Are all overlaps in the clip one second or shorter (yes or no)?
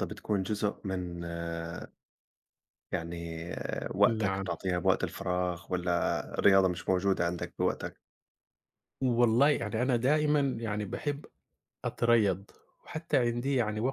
yes